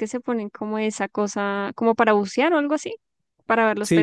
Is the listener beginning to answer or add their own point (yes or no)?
yes